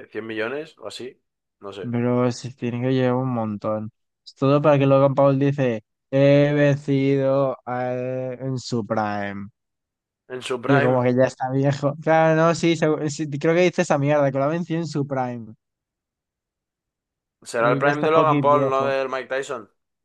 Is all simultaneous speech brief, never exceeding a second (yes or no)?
no